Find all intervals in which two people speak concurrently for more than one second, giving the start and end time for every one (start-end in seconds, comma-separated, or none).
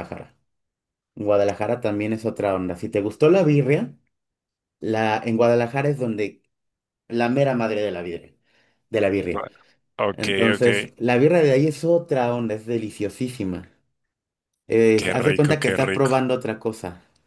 14.9-16.2